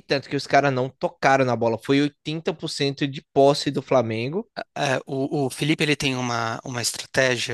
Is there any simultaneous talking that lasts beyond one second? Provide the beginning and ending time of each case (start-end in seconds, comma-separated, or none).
none